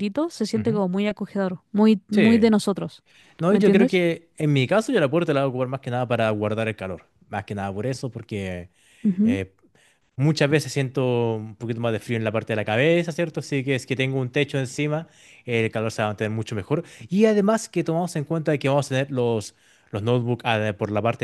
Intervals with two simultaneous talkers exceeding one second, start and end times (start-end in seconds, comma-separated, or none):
none